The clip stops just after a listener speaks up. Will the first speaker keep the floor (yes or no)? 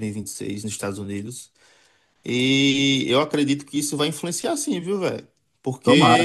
yes